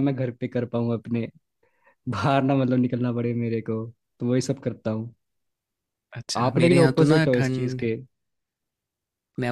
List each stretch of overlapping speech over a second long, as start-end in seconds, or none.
6.4-7.8